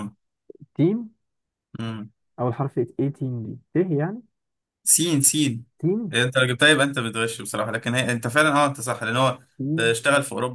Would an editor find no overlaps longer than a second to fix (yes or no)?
yes